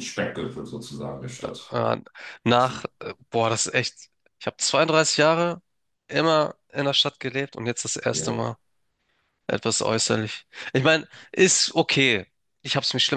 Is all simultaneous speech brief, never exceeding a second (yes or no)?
yes